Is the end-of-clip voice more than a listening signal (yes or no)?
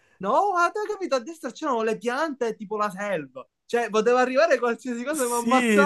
yes